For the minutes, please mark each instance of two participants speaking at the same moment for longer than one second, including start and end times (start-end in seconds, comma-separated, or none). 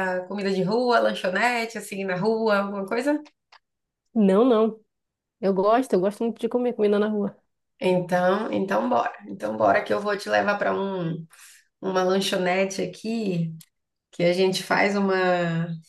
none